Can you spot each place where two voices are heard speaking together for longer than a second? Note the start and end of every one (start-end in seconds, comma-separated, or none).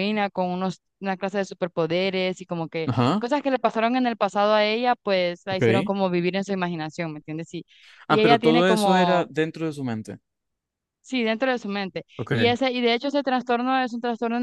8.1-9.3